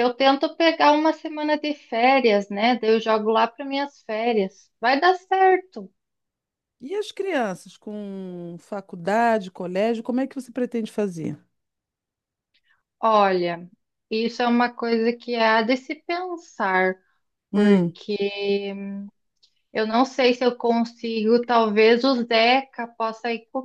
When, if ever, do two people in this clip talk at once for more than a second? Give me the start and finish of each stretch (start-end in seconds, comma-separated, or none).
none